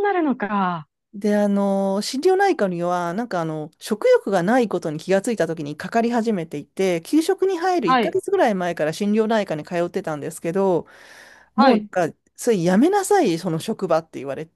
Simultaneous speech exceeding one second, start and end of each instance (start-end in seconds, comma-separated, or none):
none